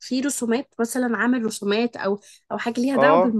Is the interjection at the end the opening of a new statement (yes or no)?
yes